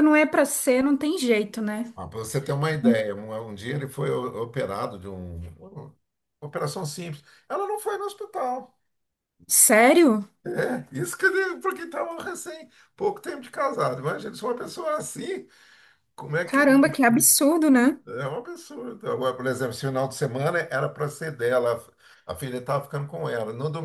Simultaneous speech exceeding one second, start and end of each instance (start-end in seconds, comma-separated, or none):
none